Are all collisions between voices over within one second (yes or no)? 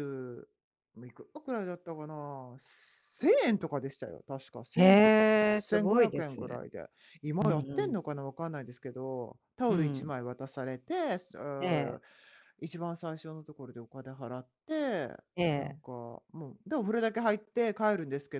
no